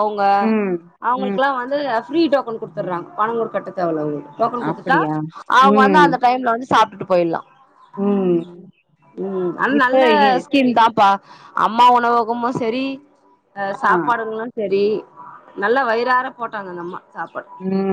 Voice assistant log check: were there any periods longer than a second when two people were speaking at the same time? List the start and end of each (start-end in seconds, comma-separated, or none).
none